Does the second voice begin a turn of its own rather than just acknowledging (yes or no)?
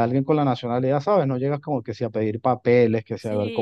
yes